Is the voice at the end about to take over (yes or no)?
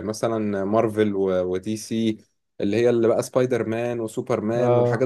no